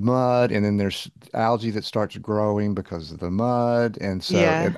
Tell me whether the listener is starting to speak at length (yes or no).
no